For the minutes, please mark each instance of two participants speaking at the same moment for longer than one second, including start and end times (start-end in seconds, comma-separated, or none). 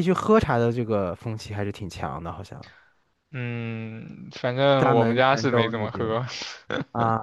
4.8-6.2